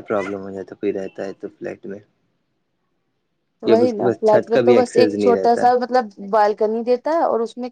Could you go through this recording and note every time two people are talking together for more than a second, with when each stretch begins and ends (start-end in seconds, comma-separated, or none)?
3.7-5.6